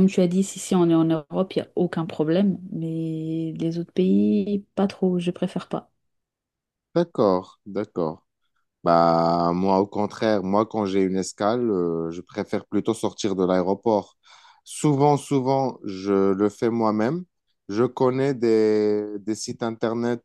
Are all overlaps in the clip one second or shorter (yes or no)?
yes